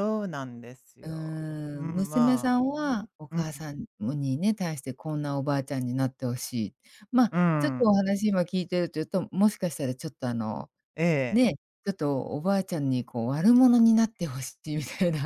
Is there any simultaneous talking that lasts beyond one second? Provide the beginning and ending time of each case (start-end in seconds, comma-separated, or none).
1.8-3.5